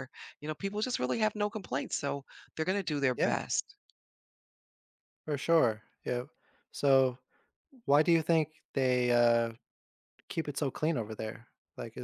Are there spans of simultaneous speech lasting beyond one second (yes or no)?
no